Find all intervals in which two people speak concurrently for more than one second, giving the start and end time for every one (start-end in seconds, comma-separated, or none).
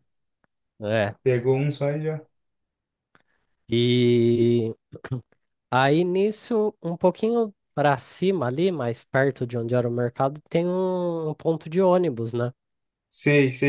none